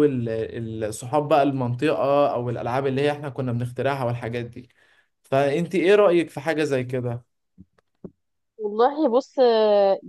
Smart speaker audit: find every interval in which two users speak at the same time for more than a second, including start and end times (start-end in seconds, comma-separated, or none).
none